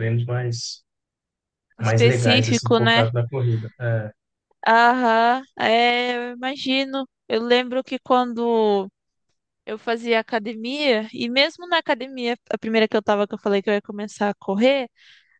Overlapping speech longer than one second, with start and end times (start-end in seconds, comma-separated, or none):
1.8-3.1